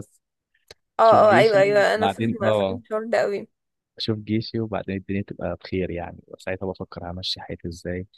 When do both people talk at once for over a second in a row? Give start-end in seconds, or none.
1.1-2.8